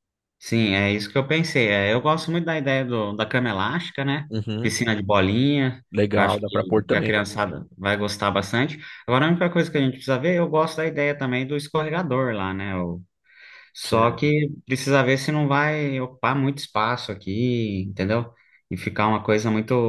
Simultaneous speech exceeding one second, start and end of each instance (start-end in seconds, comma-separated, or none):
5.9-7.2